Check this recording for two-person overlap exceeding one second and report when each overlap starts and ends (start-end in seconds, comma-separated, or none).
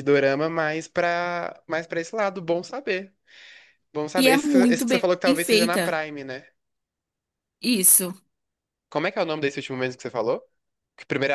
4.2-6.0